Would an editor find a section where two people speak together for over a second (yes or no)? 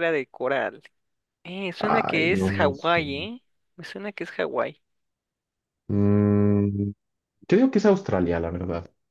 yes